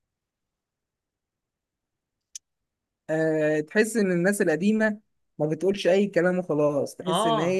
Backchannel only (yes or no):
yes